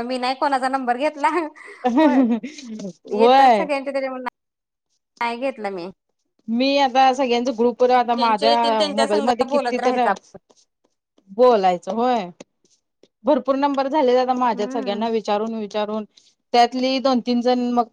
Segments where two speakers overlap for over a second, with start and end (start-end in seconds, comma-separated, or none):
8.2-10.0